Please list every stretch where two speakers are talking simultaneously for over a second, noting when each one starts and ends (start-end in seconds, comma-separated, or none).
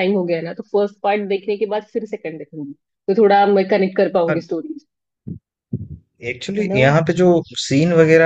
none